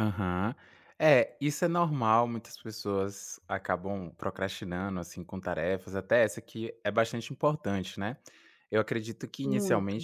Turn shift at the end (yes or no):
no